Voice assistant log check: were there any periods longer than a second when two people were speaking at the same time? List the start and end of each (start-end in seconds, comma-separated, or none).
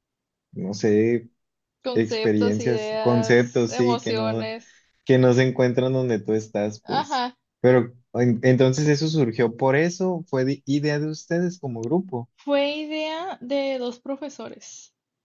1.9-4.5